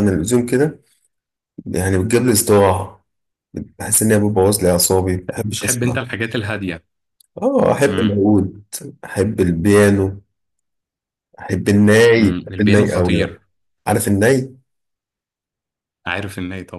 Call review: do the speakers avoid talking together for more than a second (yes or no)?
no